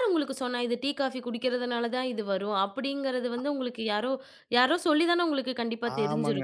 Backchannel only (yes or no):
no